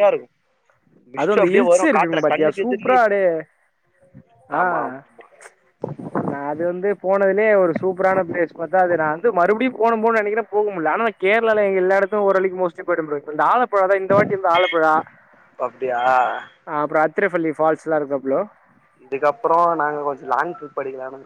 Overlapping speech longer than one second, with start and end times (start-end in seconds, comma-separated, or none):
1.2-3.0